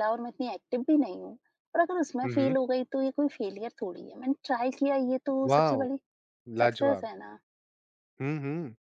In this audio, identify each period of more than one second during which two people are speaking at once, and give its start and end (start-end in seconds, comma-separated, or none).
none